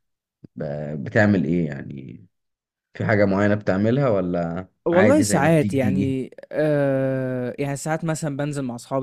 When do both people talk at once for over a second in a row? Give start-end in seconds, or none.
4.9-6.2